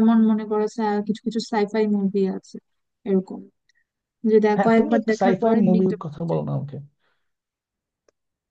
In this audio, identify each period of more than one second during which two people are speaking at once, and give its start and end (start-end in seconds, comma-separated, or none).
4.6-6.4